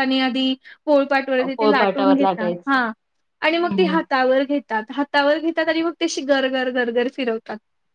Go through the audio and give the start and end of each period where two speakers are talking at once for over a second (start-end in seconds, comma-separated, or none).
1.6-2.8